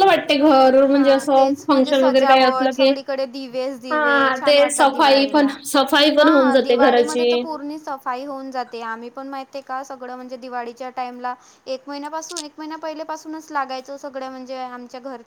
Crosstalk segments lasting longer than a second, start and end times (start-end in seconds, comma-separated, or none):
0.9-2.9, 3.9-5.5